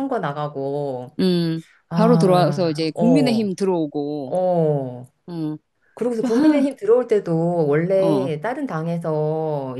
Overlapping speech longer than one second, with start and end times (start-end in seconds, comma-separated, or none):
1.9-3.5